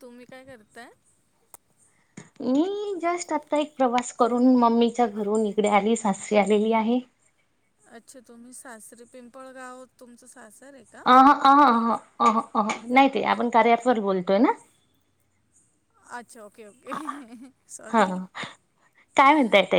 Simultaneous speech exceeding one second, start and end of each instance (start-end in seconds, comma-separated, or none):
none